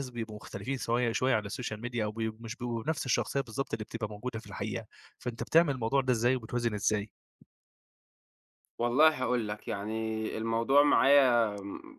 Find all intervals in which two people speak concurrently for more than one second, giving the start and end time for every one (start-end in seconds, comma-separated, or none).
none